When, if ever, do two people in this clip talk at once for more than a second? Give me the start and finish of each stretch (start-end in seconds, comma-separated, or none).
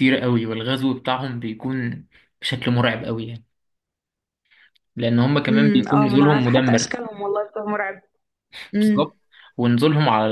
5.5-7.0